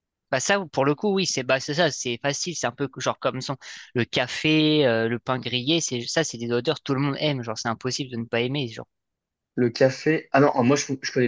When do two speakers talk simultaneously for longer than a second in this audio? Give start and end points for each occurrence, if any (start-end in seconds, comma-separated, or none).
none